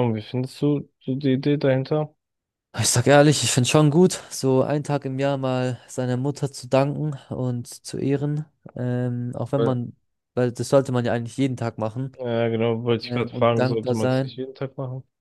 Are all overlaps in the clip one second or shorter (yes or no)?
no